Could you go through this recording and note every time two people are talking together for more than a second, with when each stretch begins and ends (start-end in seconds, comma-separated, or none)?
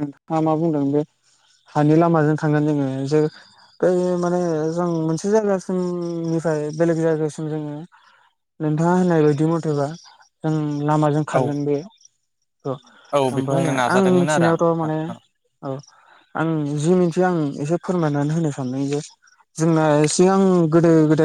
13.4-15.0